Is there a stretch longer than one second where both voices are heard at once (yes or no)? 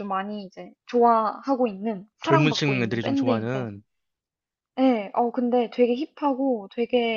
yes